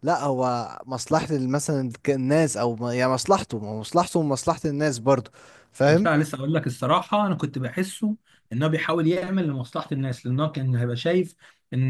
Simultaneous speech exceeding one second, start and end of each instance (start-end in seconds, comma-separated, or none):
none